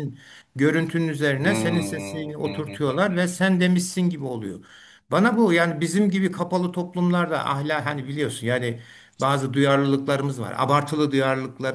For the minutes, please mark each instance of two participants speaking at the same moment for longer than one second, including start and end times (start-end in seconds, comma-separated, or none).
1.4-3.3